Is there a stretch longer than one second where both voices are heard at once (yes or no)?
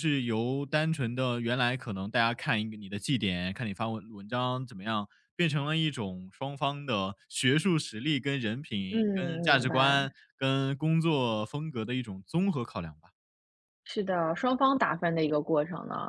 yes